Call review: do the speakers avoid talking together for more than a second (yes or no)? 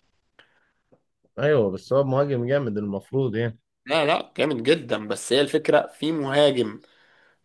yes